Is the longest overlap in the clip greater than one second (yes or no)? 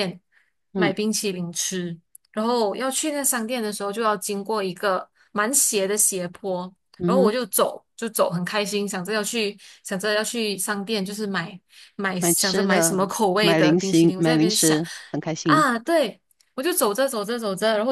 yes